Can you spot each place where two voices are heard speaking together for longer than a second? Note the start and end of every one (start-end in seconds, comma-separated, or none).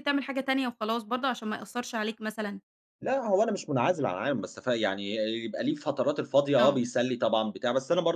none